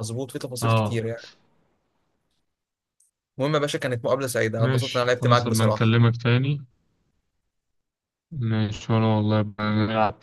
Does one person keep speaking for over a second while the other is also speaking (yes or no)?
yes